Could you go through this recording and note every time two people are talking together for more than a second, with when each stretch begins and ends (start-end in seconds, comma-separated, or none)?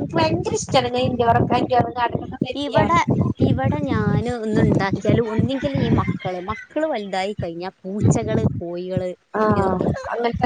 none